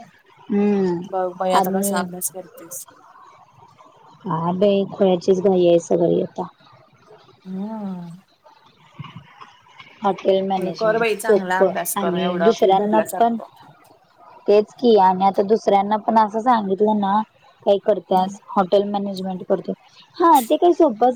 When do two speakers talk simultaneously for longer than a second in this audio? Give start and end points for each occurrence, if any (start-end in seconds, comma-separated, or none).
10.6-13.4